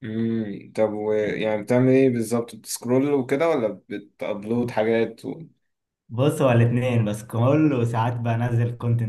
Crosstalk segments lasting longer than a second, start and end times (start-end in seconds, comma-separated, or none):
none